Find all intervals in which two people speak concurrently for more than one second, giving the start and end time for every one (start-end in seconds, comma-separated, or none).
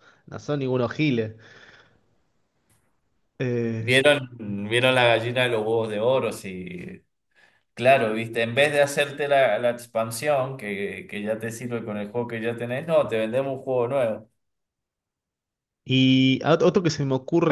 none